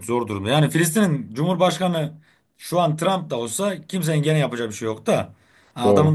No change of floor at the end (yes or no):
yes